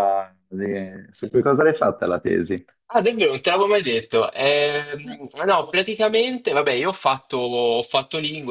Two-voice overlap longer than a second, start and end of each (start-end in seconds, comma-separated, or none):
none